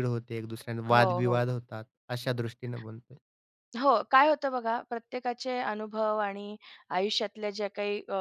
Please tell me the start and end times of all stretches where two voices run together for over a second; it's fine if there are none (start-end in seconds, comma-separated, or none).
none